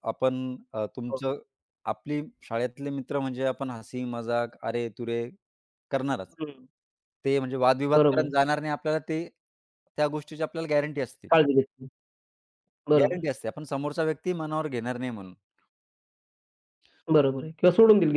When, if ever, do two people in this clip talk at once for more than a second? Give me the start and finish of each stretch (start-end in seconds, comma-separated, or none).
none